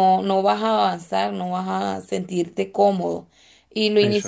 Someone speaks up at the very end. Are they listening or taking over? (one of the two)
listening